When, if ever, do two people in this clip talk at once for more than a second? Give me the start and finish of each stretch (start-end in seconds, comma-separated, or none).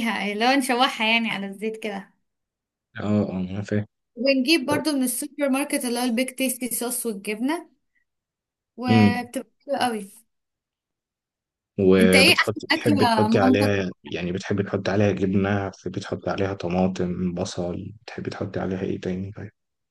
12.0-13.7